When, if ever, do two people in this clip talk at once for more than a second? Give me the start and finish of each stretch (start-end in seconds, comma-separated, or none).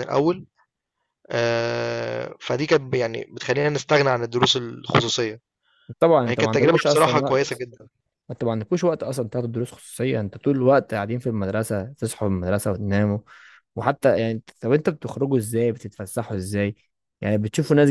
6.3-7.6